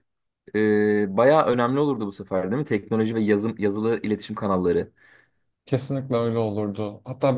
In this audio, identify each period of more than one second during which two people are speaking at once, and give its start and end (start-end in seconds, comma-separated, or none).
none